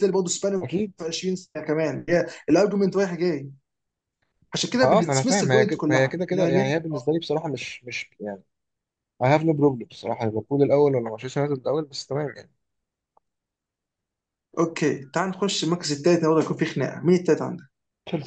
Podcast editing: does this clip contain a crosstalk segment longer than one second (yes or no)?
yes